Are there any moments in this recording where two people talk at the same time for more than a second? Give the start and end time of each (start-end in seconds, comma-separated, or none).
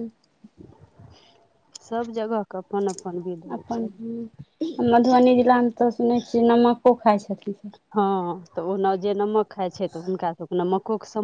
none